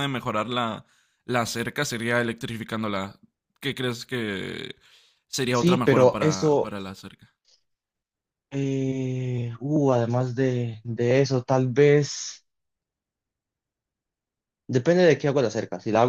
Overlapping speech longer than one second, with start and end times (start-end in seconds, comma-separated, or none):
5.5-6.7